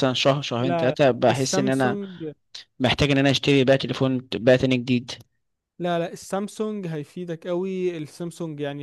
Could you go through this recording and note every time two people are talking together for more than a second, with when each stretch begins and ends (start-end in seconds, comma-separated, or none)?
0.6-2.0